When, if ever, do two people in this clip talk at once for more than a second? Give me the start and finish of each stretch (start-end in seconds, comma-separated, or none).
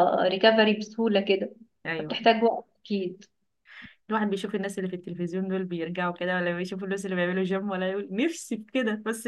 none